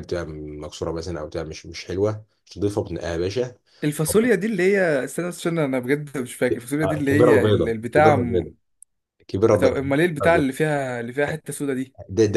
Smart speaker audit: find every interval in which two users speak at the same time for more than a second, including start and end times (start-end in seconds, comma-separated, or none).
6.8-8.5